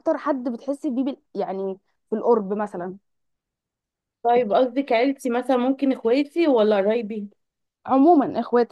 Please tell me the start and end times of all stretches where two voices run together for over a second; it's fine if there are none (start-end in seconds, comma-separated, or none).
none